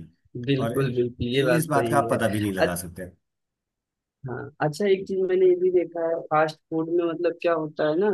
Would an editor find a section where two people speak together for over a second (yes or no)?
yes